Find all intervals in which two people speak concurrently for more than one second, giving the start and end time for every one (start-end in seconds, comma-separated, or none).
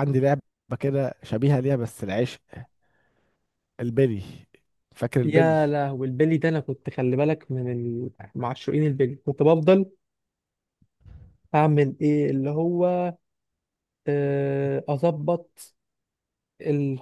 none